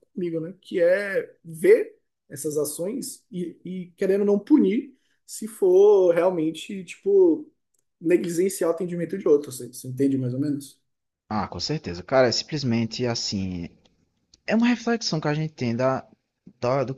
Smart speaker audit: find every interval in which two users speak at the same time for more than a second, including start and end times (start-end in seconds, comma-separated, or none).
none